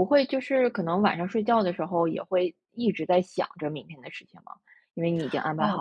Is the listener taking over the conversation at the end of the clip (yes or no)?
yes